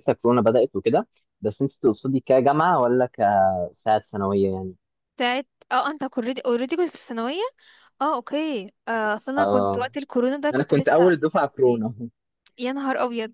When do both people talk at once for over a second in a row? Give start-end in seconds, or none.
10.5-11.8